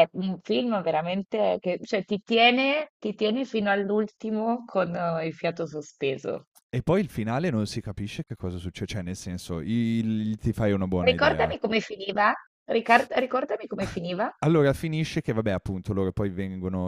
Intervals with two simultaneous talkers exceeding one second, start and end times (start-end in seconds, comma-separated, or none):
none